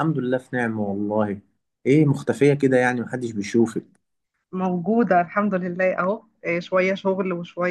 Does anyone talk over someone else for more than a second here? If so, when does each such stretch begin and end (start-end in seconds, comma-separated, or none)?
none